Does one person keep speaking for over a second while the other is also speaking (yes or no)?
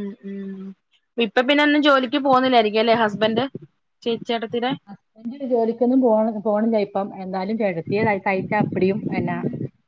no